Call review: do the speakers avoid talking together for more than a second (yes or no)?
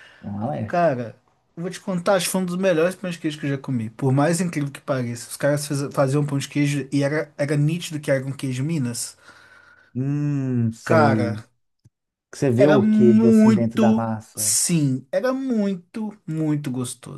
no